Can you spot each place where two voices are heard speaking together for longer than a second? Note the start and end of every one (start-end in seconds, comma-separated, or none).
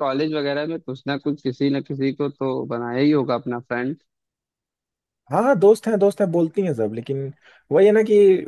none